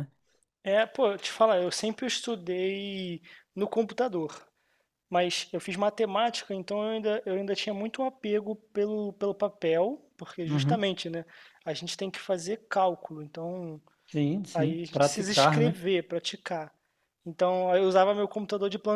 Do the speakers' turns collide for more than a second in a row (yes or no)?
yes